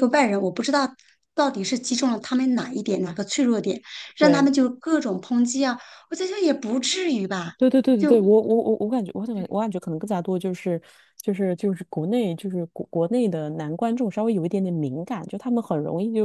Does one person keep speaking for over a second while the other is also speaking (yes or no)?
no